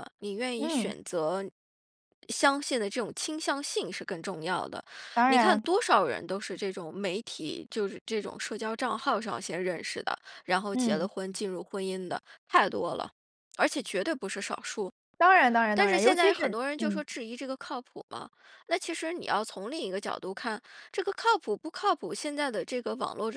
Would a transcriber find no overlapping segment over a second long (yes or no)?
no